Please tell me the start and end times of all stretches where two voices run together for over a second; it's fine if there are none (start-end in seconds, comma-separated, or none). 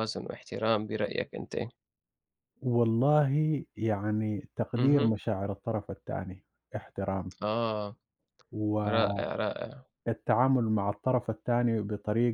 none